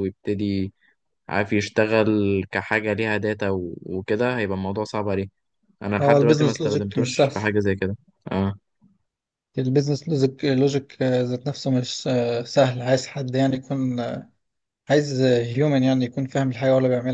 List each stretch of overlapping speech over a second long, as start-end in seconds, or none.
6.0-7.3